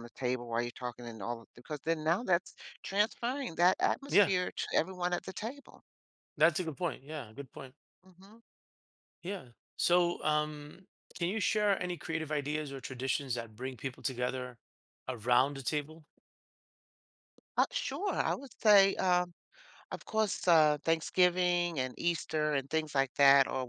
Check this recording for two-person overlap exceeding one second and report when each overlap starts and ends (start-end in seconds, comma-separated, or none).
none